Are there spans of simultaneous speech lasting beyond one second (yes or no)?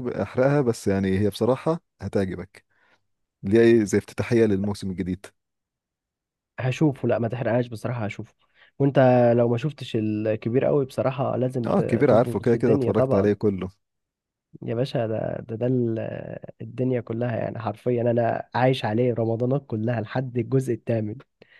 yes